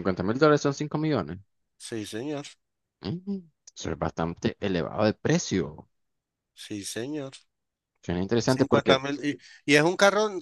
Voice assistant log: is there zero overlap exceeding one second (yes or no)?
yes